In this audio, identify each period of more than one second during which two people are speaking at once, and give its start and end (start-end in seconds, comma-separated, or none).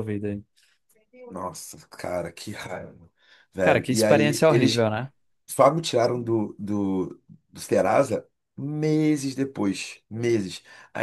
3.6-4.9